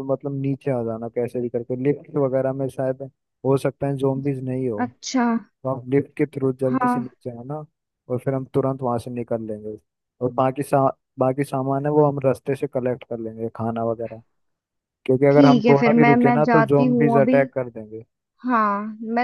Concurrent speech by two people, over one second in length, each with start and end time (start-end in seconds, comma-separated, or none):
15.3-17.4